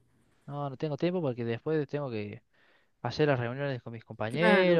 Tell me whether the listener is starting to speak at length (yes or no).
yes